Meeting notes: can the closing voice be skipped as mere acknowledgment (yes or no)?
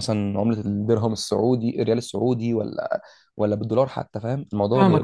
no